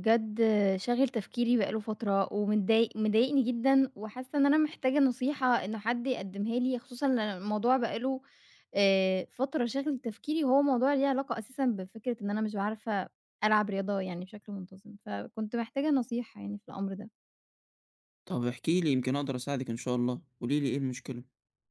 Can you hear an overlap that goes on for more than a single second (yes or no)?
no